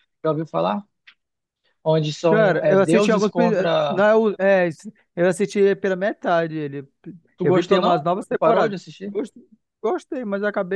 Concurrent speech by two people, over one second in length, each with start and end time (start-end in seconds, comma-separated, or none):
2.3-4.0, 7.4-9.1